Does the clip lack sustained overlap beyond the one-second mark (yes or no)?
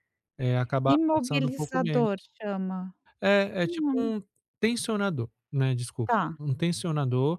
no